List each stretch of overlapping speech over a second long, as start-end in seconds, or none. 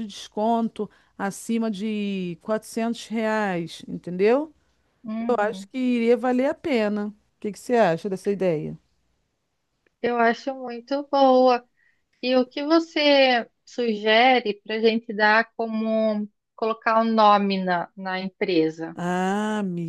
none